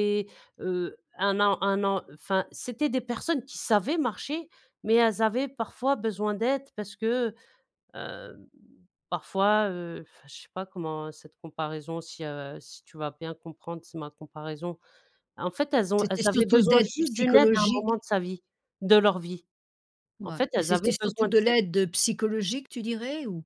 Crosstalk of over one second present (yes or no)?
yes